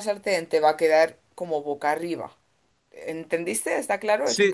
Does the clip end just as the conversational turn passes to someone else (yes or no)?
yes